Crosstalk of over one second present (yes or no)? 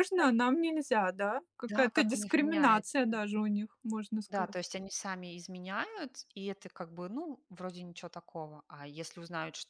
yes